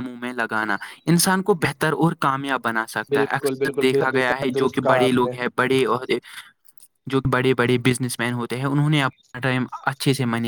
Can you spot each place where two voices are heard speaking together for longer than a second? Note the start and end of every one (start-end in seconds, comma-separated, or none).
3.1-5.3